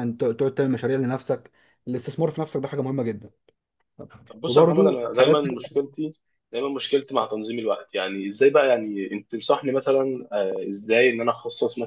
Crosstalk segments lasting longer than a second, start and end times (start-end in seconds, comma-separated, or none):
4.5-5.8